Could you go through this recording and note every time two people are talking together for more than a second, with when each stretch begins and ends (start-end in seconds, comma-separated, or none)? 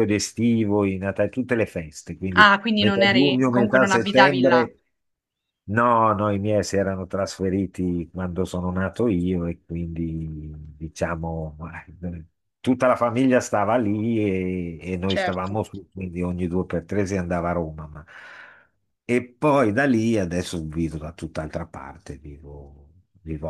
2.4-4.6